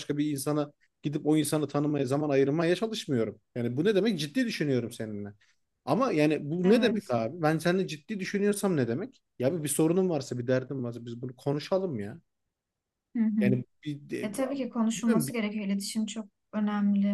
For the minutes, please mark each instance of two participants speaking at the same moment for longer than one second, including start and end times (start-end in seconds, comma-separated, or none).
none